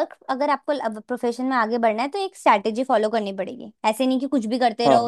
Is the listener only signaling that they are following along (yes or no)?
yes